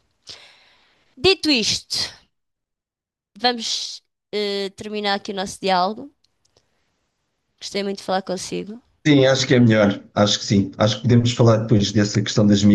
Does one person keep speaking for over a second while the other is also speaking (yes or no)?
no